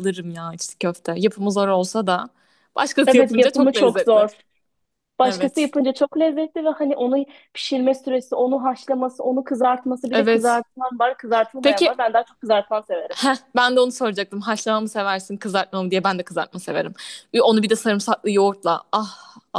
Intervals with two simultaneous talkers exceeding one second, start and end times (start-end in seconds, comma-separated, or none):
3.1-4.3